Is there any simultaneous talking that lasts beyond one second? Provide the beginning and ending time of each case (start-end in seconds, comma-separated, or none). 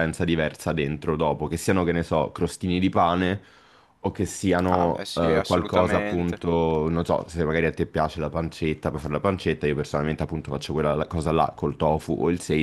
4.7-6.4